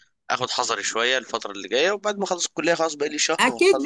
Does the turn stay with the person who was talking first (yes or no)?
no